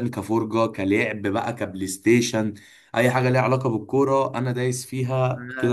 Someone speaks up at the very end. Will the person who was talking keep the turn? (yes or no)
no